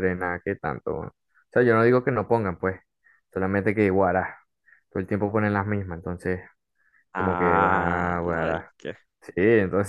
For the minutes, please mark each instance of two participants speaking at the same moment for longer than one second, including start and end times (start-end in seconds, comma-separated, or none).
7.1-8.7